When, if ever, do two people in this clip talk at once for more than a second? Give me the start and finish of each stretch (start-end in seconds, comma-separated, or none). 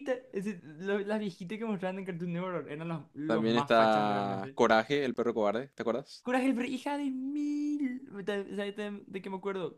3.2-4.6